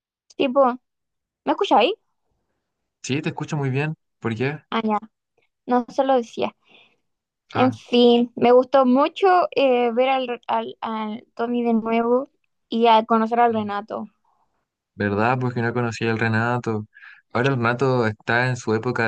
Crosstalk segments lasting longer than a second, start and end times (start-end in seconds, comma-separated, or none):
none